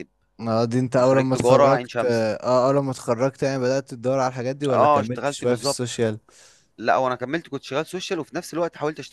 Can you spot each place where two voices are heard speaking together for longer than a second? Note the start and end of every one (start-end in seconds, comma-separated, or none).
1.0-2.2, 4.7-6.0